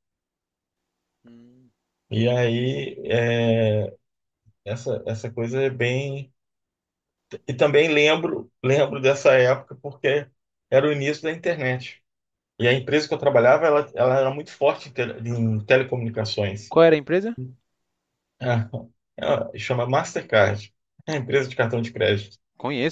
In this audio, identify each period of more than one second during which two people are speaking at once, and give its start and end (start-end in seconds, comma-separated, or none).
none